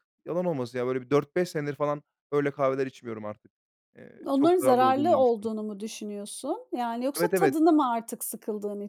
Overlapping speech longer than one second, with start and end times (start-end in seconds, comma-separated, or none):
4.2-5.5